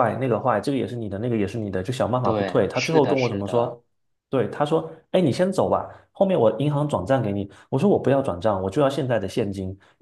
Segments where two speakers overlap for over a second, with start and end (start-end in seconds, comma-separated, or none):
2.2-3.8